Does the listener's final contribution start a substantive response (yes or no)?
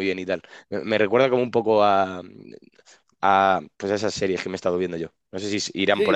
yes